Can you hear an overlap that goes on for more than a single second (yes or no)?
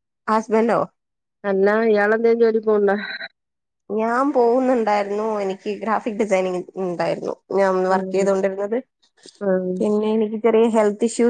no